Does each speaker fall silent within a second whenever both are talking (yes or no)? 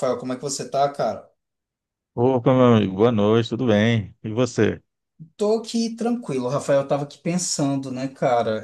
yes